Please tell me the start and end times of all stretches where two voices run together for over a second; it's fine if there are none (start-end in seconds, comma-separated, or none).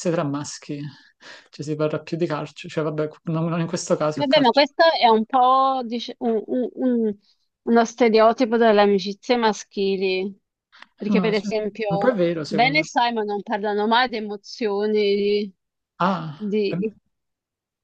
11.0-13.0